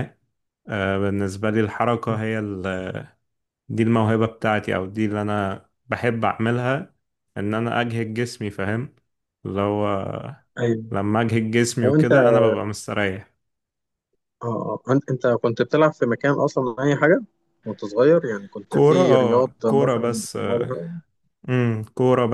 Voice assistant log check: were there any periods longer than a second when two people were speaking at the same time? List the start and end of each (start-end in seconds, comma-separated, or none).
18.7-20.4